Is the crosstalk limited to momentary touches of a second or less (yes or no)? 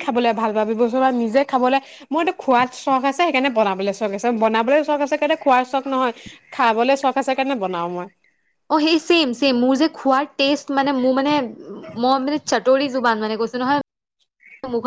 yes